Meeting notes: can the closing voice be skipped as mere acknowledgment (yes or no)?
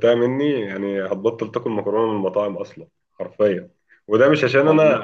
yes